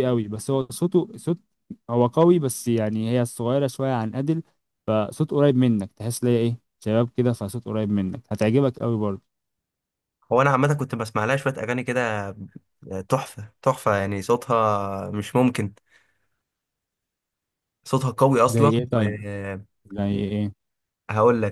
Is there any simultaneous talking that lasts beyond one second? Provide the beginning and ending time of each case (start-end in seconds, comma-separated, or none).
none